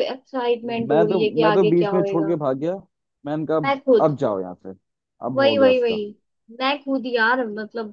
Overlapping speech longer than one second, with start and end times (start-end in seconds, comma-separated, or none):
0.6-2.3